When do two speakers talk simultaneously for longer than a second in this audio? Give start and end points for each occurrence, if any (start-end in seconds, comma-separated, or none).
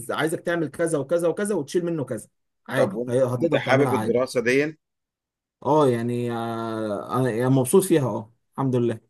2.8-4.3